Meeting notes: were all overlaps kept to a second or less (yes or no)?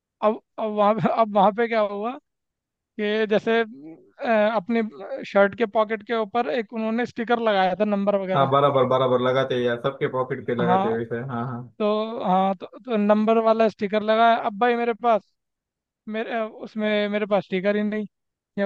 yes